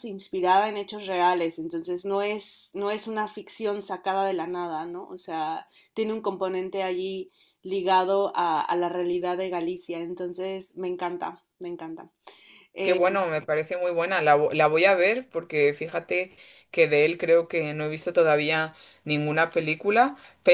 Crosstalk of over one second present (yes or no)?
no